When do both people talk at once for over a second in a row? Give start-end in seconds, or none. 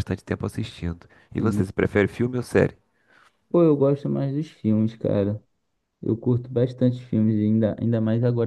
none